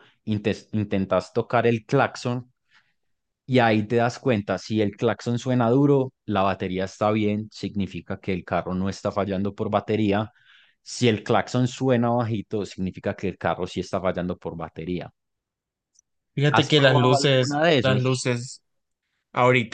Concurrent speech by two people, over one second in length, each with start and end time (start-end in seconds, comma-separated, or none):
16.5-18.2